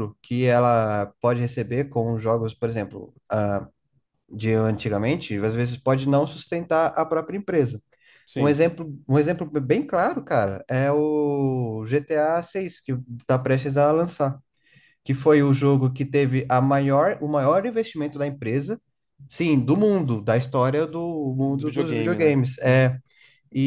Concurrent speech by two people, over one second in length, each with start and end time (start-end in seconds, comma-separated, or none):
21.4-22.9